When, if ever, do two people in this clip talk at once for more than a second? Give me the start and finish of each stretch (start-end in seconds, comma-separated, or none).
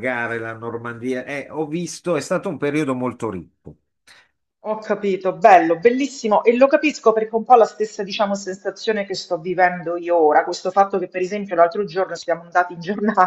none